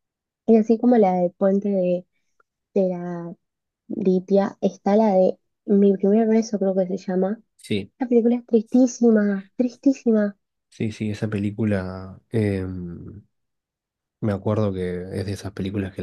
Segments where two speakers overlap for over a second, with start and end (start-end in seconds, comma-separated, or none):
none